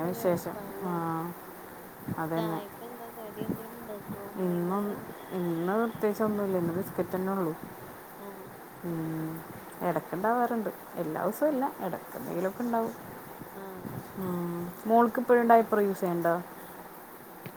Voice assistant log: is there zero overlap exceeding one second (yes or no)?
yes